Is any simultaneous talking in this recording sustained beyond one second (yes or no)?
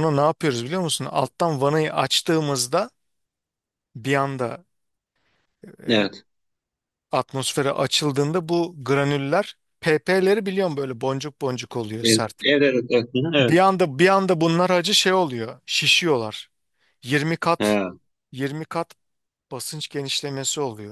no